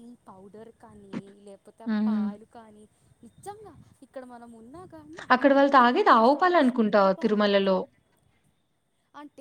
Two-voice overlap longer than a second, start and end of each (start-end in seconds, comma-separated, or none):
5.6-7.7